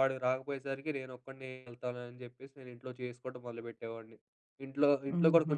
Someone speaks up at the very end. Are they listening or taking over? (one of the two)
listening